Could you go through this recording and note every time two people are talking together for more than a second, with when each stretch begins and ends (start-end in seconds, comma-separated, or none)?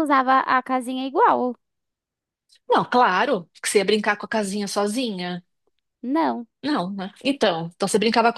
none